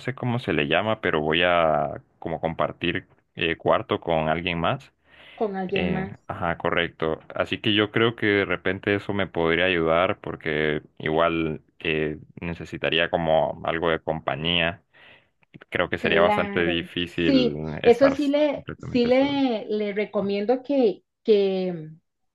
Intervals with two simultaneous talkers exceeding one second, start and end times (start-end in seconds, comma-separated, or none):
16.0-19.4